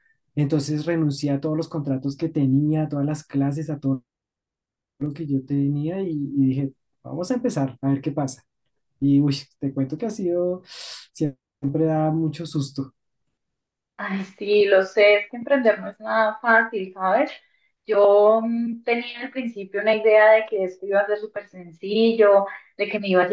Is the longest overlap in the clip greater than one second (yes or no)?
no